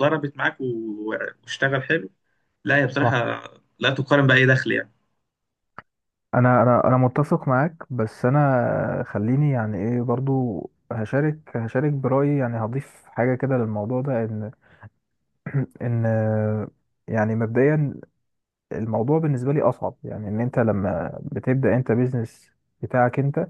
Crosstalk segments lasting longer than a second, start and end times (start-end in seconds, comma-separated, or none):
none